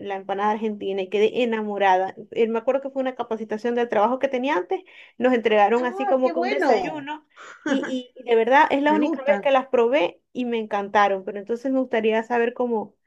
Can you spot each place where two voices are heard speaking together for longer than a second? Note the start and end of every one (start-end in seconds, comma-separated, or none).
5.8-7.1